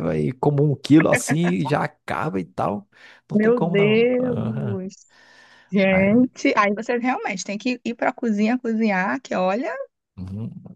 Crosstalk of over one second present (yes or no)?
yes